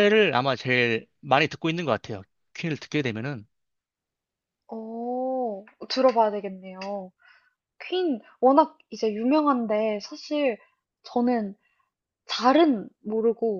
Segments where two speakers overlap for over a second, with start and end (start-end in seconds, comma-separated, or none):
none